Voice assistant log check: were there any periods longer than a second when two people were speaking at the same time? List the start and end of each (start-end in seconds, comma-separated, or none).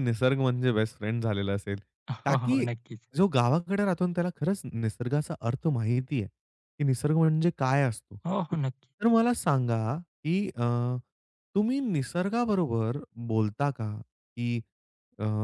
none